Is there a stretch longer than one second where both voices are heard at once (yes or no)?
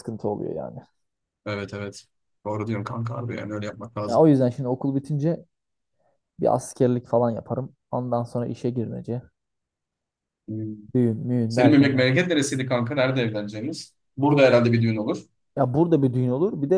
no